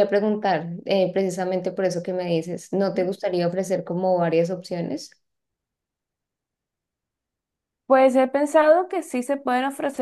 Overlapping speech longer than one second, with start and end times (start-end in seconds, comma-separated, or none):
none